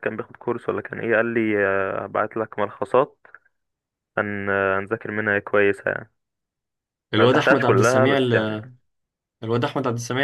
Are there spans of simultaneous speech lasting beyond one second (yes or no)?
yes